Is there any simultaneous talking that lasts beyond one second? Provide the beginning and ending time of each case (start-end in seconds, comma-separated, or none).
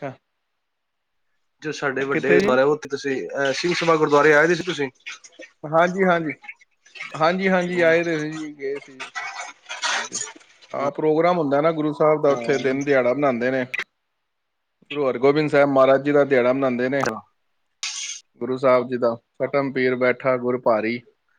none